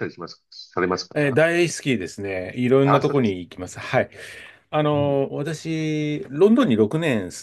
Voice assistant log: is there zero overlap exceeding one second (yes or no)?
yes